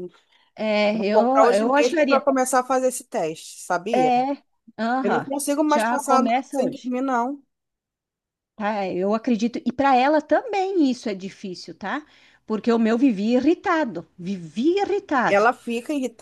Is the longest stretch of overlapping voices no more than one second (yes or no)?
no